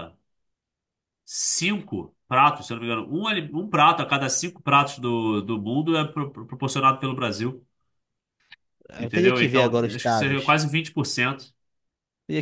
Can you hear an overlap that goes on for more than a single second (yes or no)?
yes